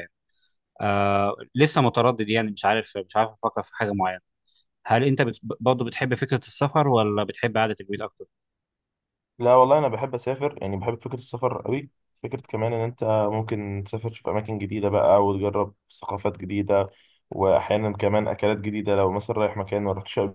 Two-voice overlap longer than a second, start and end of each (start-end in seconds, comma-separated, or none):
none